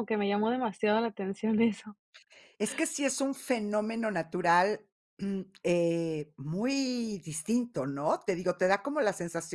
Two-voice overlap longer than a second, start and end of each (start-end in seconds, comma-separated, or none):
none